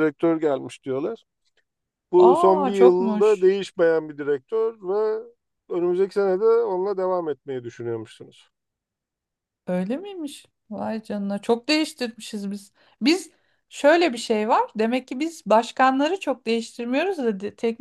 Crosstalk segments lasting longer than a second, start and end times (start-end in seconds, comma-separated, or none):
2.2-3.5